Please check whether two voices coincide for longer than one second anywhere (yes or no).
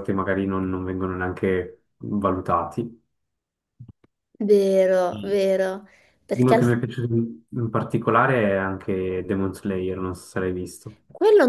no